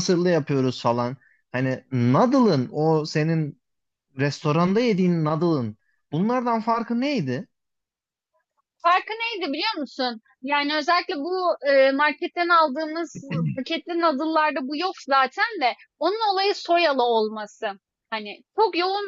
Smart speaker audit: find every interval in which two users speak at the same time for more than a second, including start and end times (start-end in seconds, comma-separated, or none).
none